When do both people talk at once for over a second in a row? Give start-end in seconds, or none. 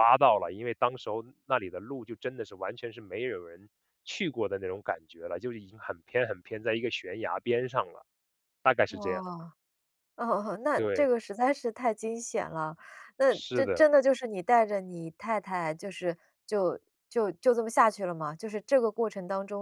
none